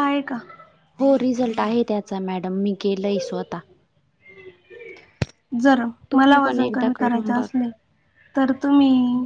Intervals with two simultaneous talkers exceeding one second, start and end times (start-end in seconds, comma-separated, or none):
6.1-7.6